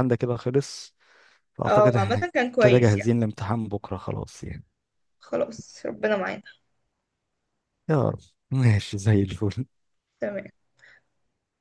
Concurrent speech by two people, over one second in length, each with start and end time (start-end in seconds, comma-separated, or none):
1.7-3.1